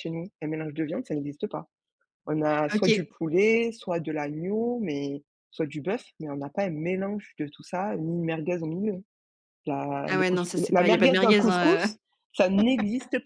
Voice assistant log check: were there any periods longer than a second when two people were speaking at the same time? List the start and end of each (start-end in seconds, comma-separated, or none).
10.1-11.9